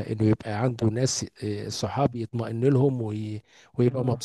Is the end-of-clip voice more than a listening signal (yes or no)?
no